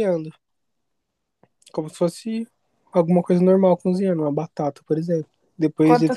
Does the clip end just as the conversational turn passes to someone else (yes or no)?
no